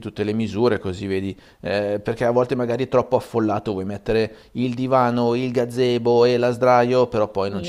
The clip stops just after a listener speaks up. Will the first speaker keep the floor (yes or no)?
no